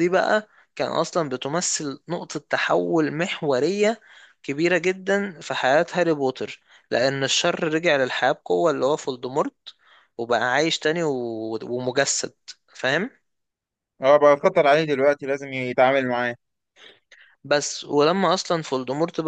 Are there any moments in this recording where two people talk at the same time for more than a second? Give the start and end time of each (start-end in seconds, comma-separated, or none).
none